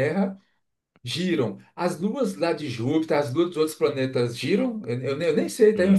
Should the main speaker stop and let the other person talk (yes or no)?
yes